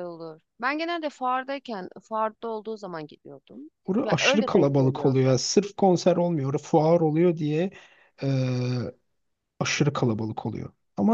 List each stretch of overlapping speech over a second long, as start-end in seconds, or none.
4.0-5.3